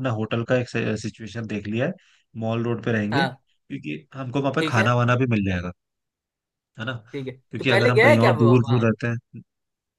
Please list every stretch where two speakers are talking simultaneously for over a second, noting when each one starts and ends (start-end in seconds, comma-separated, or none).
7.5-8.8